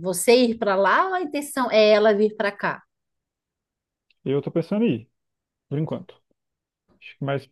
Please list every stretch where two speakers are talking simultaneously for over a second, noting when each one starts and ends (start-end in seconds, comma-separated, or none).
none